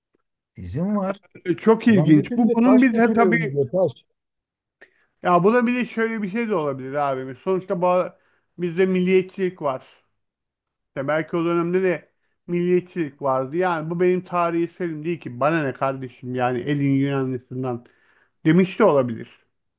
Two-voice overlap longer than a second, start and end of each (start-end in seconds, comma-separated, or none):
1.9-3.6